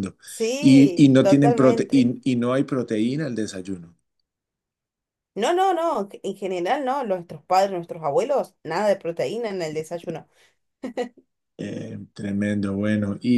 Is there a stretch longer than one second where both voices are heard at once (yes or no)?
yes